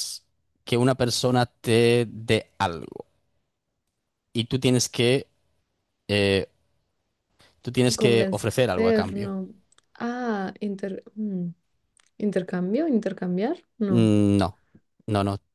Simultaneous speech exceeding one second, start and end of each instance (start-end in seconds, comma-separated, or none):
8.0-9.3